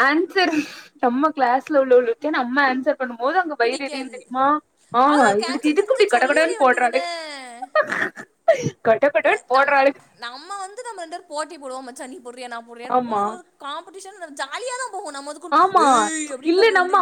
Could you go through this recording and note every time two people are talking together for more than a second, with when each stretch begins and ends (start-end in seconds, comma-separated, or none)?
5.1-7.0